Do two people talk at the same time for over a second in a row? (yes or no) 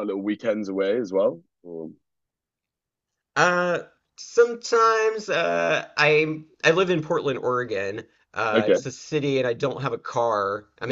no